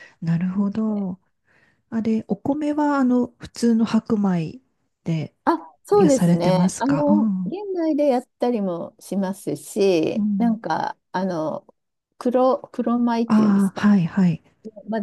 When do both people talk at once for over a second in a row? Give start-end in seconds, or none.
5.9-7.5